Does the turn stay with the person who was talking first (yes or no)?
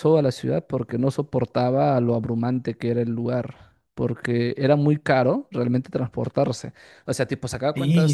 yes